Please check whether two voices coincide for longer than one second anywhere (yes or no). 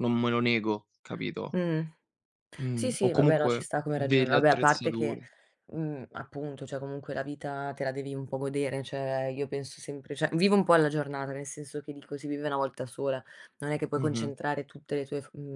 yes